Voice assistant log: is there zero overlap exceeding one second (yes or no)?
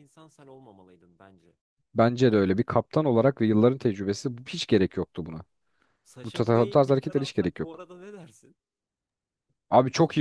no